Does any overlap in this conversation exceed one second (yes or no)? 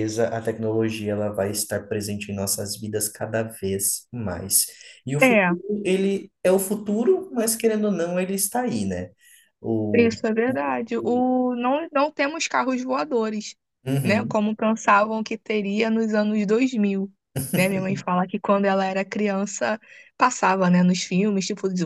no